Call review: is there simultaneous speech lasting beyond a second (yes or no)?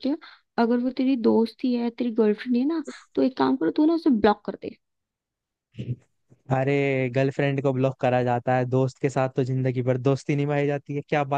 no